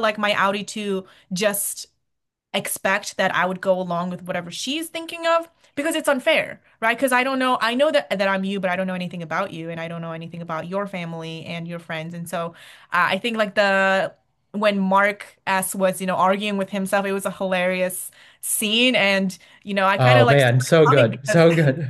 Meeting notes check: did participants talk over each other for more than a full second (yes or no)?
yes